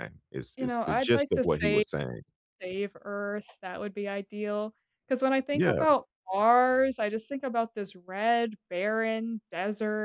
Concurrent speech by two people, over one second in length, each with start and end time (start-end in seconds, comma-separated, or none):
0.6-1.8